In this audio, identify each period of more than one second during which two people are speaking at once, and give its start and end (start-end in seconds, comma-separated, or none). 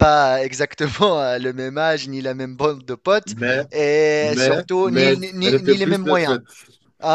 4.2-6.4